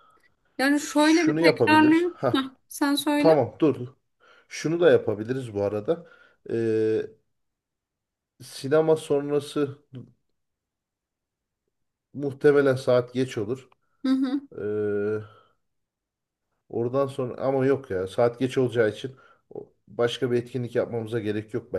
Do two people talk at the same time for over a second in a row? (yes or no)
yes